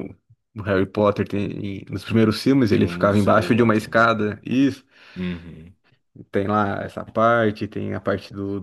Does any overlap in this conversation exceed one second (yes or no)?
yes